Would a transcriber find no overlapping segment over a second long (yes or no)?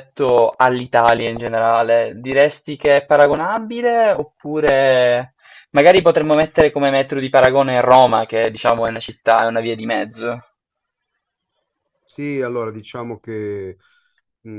yes